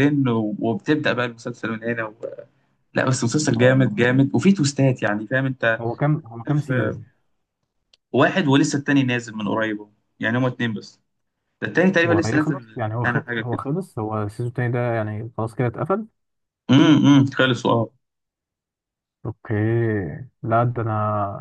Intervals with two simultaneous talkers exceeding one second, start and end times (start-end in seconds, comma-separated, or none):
12.0-13.6